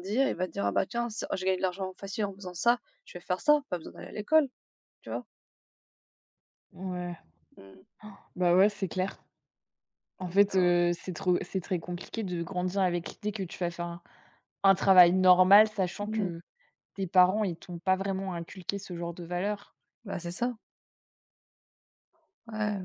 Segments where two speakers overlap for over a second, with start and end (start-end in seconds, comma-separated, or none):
none